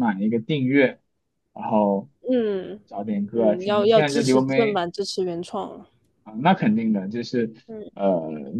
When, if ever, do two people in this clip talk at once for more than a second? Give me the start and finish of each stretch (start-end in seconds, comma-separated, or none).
3.3-4.8